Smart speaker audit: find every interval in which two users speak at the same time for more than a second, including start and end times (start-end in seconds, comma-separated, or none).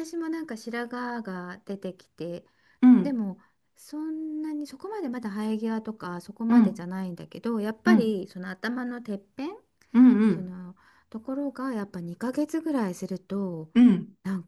none